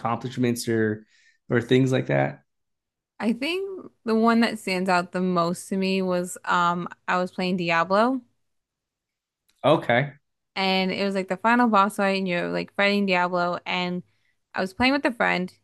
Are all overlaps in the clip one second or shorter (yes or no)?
yes